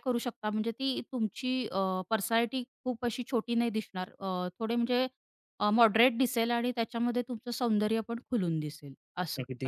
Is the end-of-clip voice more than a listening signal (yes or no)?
yes